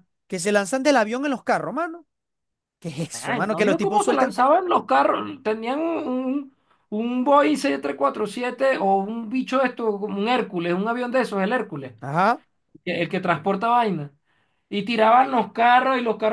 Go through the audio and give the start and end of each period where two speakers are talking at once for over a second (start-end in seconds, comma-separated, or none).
3.0-4.4